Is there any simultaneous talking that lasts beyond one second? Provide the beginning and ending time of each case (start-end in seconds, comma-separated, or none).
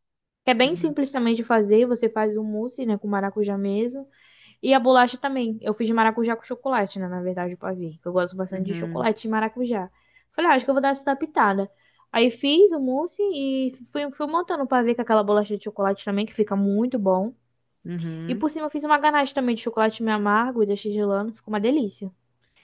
none